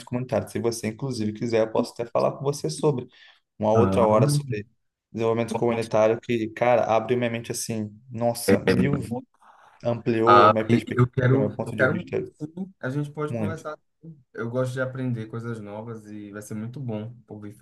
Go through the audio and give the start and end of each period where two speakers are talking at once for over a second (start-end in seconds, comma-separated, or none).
10.2-12.3